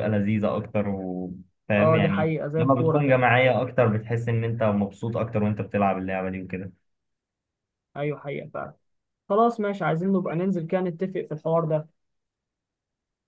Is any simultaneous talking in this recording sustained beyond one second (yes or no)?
yes